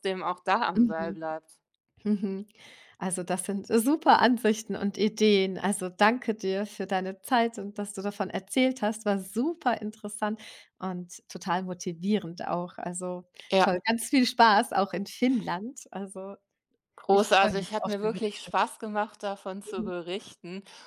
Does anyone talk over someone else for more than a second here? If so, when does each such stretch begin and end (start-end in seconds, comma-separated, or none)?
17.1-18.5